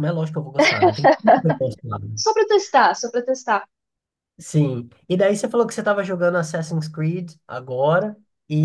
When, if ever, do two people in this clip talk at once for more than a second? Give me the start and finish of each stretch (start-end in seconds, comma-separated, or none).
none